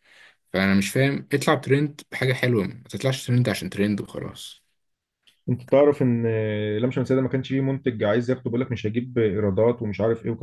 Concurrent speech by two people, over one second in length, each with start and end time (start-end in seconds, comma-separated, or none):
none